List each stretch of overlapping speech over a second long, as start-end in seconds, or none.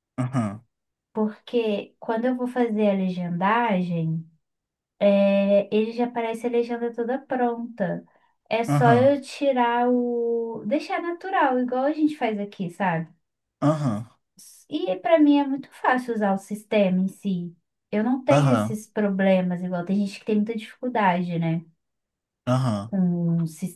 none